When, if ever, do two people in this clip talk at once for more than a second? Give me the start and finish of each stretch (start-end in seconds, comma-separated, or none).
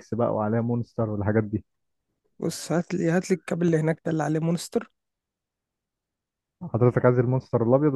none